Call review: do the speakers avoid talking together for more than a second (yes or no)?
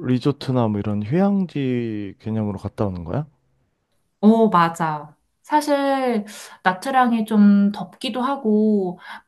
yes